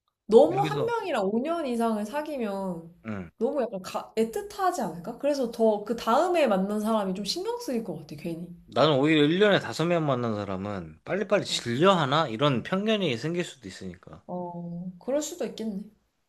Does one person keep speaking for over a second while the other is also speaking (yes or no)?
no